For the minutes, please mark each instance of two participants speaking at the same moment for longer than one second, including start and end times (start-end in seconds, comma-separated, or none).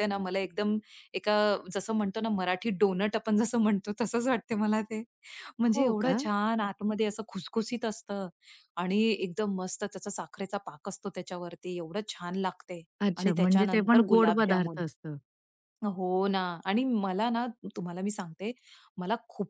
13.2-14.8